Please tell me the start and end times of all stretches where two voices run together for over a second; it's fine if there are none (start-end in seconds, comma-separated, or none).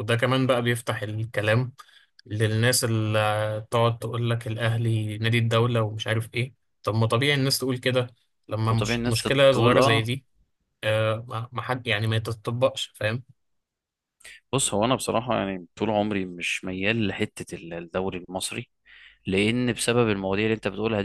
8.7-10.1